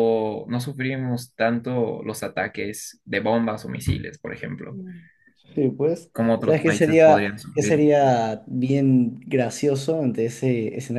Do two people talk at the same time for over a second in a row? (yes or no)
yes